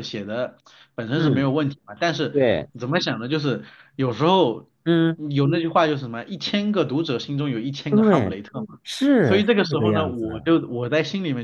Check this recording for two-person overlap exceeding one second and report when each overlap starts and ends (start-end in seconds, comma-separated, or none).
9.2-10.5